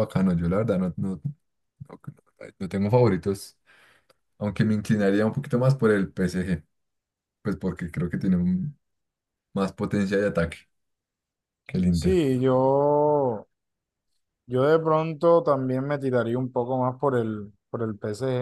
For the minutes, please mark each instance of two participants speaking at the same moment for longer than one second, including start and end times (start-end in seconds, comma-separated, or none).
none